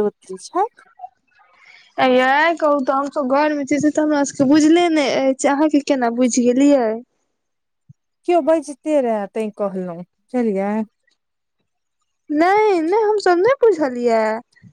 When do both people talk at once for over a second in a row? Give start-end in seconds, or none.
none